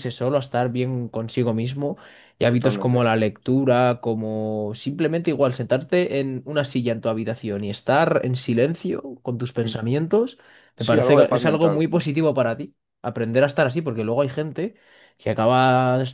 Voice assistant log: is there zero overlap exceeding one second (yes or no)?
no